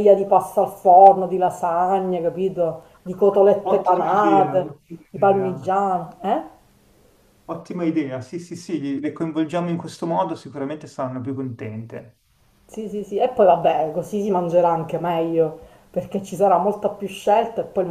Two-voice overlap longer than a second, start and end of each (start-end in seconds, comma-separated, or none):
3.6-5.8